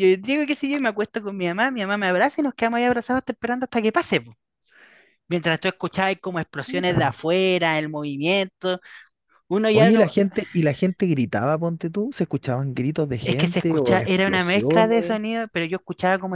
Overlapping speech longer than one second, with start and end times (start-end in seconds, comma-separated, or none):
13.2-15.2